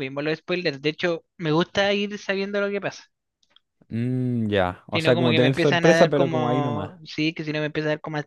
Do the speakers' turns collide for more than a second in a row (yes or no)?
yes